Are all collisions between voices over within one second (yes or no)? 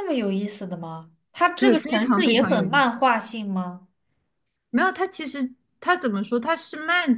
no